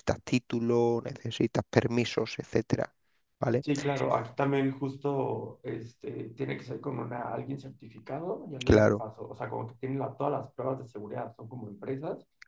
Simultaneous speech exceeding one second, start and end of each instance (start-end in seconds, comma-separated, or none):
none